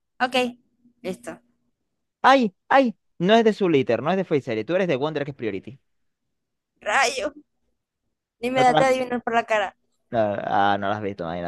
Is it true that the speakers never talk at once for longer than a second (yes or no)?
yes